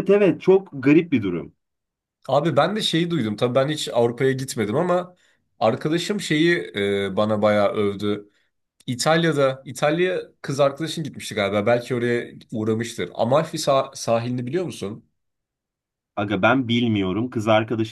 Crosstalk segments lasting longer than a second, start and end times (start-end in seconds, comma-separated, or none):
none